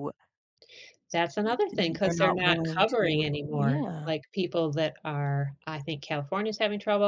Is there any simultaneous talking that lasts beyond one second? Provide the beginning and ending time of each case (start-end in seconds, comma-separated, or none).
2.0-4.1